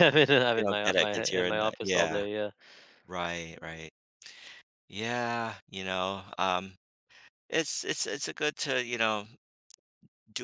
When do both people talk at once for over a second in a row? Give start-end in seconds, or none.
0.6-2.3